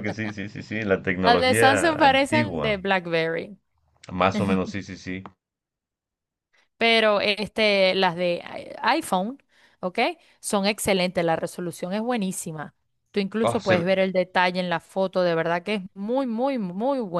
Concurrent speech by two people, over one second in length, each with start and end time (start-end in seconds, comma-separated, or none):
1.2-2.8